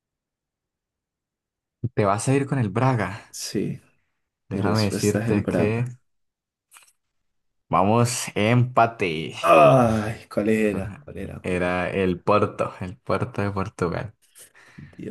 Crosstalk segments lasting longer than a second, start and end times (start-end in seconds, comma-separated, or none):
4.5-5.8